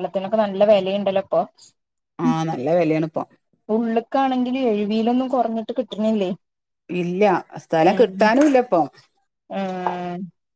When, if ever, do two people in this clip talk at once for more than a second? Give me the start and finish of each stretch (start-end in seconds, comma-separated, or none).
none